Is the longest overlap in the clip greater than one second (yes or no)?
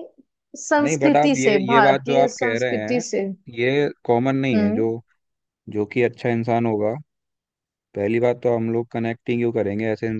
yes